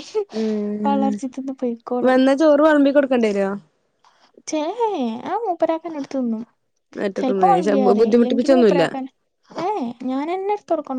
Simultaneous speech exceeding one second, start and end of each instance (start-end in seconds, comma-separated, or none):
7.2-8.8